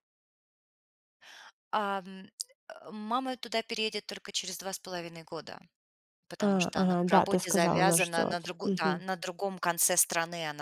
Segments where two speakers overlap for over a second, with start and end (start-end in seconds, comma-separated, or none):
6.4-9.0